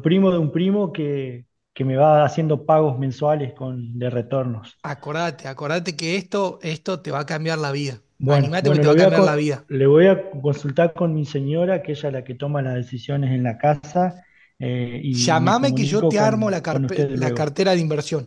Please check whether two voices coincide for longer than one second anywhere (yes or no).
yes